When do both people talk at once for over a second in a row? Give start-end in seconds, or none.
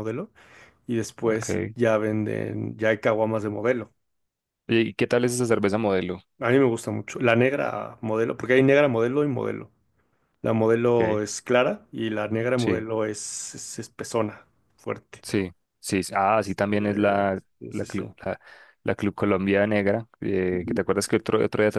16.4-18.0